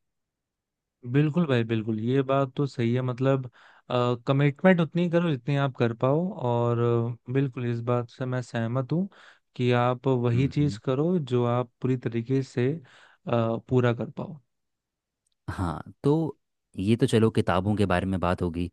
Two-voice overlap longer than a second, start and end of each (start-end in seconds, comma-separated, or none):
none